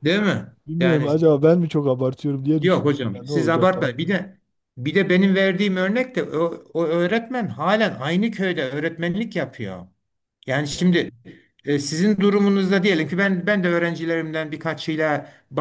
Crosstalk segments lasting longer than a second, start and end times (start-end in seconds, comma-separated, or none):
2.6-4.1